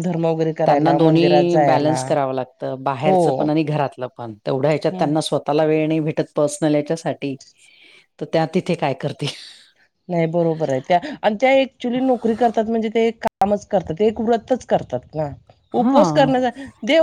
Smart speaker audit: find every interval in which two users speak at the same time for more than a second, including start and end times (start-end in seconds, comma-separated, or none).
0.7-2.0